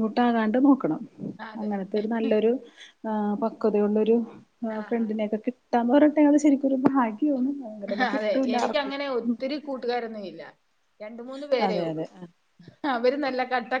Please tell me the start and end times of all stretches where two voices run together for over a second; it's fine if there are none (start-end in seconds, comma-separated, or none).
none